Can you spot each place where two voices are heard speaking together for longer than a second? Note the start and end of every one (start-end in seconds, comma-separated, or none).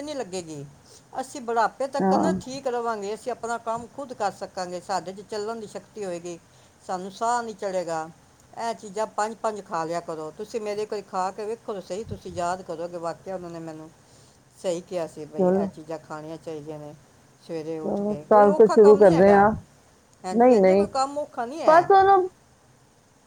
17.8-19.5